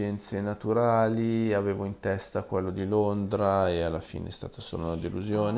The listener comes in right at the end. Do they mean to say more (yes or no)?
yes